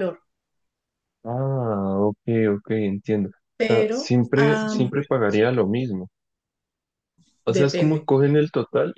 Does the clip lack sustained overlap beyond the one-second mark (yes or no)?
no